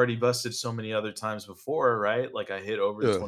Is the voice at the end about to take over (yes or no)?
no